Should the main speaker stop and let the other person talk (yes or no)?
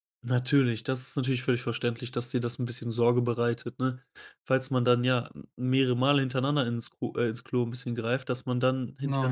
no